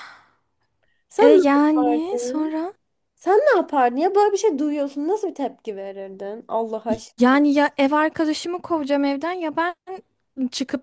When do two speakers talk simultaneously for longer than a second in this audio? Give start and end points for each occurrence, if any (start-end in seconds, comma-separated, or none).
1.2-2.6